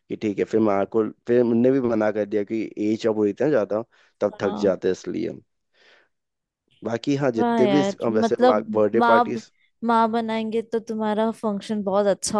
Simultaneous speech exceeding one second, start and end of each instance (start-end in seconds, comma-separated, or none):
7.4-9.4